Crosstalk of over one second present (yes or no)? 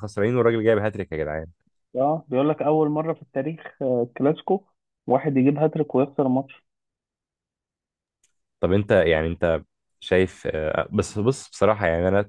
no